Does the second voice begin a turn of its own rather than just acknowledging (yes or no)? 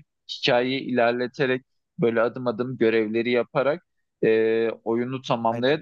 no